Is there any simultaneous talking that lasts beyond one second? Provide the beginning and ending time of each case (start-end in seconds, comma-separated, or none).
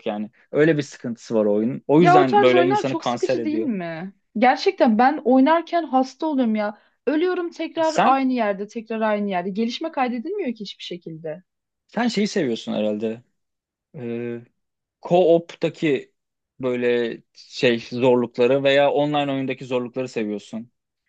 2.0-3.7